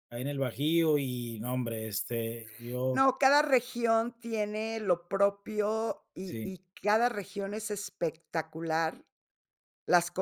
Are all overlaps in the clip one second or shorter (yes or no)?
yes